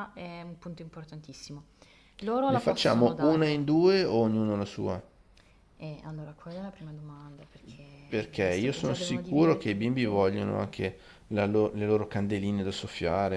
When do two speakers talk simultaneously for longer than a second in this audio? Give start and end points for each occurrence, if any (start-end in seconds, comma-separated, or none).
2.5-3.7, 8.4-10.4